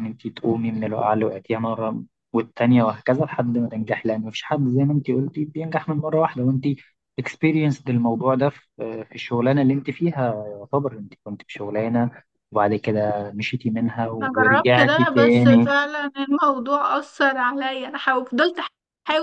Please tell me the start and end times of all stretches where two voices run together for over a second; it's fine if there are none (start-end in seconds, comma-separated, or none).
14.2-15.7